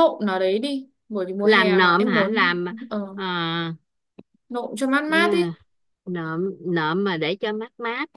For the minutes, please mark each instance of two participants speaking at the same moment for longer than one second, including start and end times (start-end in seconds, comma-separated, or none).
1.4-2.7